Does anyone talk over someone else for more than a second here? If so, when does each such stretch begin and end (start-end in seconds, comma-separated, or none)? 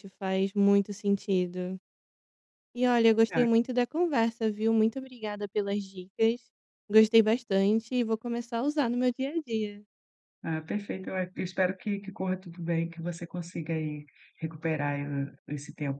none